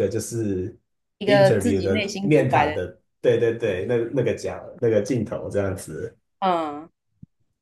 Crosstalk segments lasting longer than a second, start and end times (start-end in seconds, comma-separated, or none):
1.2-2.7